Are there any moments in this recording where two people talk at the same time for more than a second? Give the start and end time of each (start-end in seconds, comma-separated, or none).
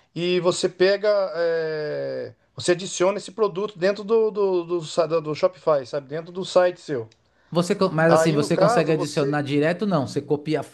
8.1-9.4